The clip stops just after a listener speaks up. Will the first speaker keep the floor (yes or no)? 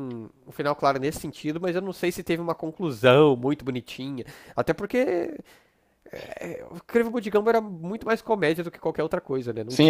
no